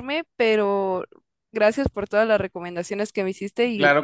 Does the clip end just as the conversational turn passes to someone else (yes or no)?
yes